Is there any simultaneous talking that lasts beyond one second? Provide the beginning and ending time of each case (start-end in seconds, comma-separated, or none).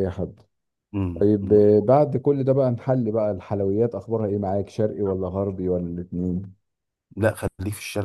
none